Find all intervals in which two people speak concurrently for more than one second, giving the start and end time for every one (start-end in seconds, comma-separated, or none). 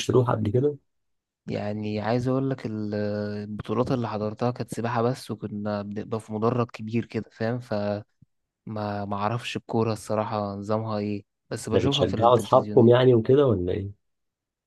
11.7-12.9